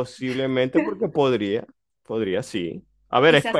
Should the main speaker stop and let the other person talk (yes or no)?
yes